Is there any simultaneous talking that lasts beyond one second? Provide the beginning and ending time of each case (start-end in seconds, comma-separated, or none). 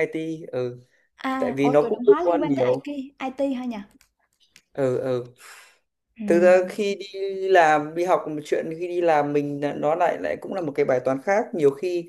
1.4-2.9